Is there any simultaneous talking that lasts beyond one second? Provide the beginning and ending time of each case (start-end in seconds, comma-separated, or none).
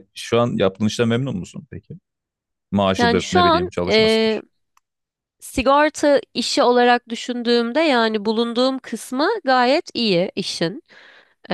3.0-4.4